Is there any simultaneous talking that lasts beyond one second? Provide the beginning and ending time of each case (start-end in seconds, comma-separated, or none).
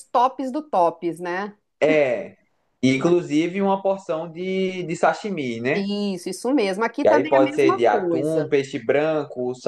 7.0-8.5